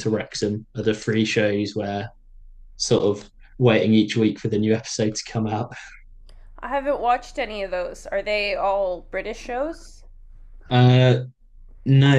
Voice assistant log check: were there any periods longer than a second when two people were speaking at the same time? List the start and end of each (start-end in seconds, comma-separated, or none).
none